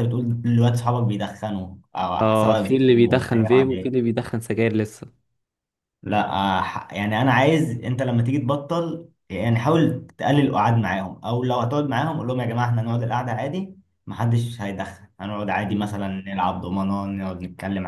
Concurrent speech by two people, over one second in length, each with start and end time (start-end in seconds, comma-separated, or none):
2.2-4.0